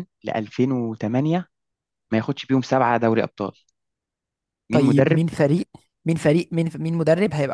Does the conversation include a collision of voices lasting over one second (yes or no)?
no